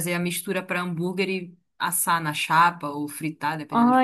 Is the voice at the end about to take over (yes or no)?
yes